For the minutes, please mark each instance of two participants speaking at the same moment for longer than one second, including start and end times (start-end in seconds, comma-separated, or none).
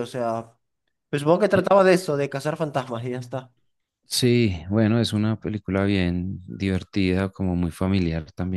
none